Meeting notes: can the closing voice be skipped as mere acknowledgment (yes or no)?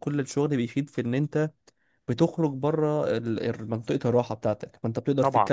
yes